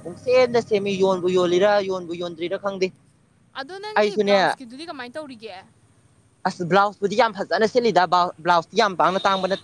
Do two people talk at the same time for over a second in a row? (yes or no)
no